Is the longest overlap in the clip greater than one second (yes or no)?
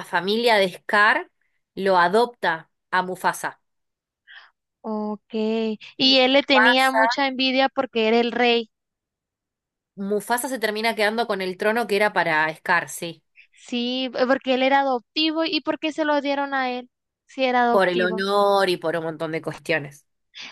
yes